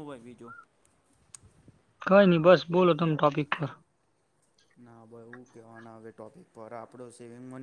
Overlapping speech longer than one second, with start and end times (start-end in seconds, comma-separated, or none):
none